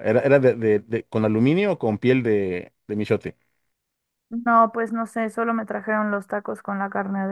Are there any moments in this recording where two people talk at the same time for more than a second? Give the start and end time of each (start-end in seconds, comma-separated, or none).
none